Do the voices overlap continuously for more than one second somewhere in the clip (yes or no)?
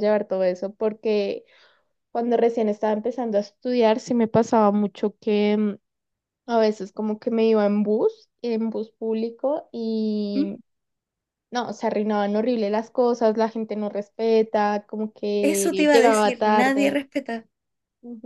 yes